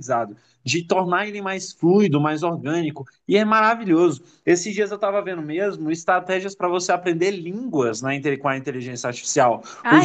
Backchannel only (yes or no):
yes